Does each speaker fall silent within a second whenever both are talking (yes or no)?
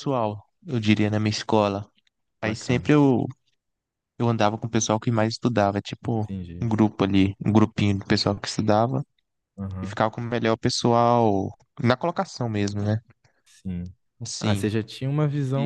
yes